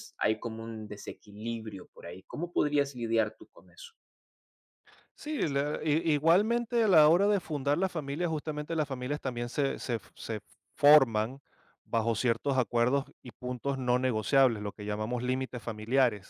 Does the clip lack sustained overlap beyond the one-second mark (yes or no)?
yes